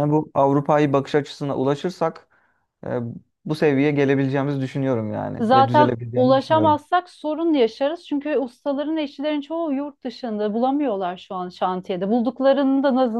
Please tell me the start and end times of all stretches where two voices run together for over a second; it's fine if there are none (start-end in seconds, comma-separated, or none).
5.4-6.8